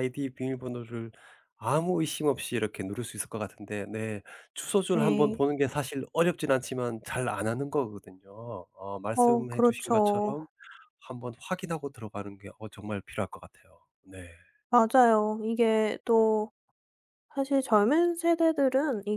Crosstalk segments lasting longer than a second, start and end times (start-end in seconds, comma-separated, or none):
9.1-10.4